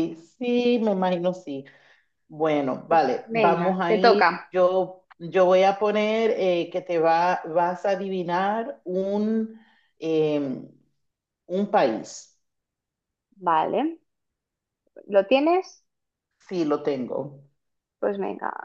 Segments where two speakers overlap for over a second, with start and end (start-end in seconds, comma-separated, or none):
2.9-4.5